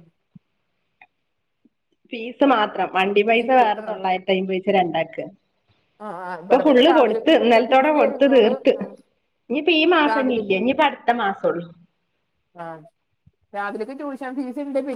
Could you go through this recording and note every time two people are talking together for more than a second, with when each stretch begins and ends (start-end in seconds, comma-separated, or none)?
6.4-8.7